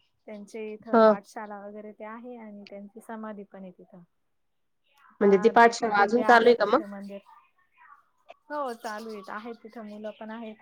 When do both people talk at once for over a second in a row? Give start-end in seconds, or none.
5.2-6.8